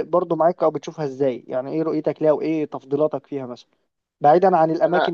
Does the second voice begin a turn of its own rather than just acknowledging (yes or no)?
no